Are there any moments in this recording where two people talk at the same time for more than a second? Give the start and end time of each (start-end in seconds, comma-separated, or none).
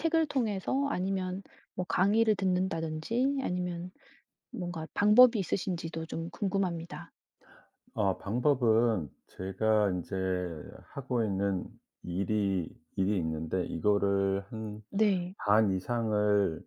none